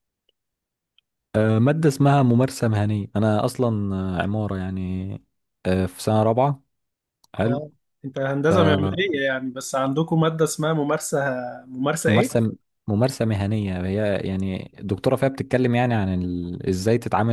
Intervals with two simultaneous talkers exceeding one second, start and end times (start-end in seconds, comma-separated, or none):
none